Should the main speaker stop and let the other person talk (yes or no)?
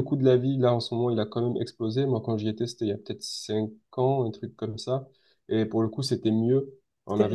no